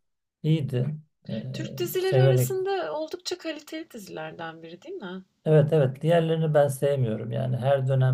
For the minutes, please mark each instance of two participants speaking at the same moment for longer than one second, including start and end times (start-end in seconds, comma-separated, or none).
none